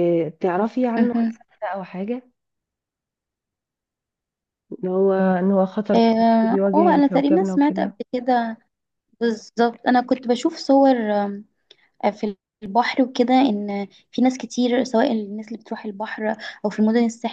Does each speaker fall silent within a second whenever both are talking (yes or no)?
no